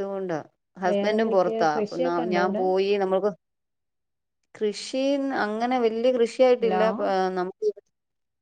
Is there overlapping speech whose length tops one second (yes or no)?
yes